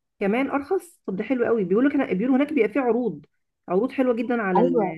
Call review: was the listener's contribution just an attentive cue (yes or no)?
no